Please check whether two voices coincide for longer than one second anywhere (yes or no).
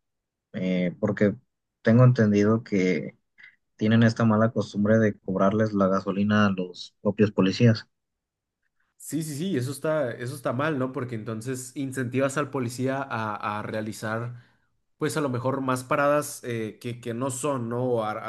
no